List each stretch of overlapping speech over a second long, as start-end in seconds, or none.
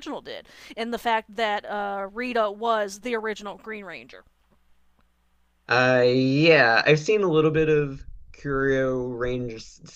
none